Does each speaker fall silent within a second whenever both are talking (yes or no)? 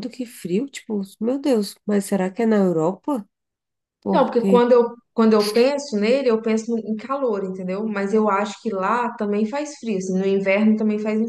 yes